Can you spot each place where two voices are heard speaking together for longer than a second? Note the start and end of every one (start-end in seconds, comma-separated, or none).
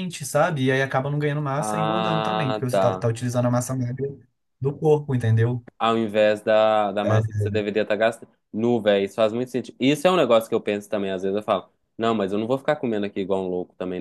1.6-3.1